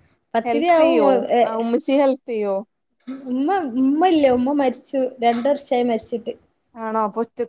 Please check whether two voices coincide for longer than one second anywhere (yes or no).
no